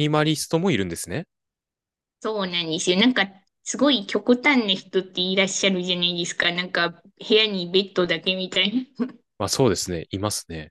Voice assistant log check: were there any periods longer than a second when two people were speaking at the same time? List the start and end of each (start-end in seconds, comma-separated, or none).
none